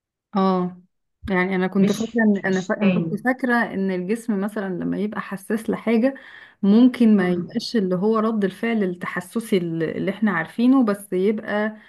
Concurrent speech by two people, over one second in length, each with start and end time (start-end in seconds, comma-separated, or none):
1.8-3.2